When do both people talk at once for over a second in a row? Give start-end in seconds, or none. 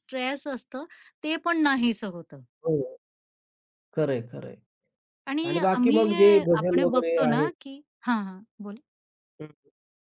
5.5-7.5